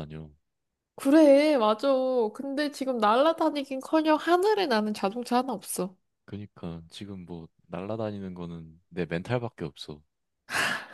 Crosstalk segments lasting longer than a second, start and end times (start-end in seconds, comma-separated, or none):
none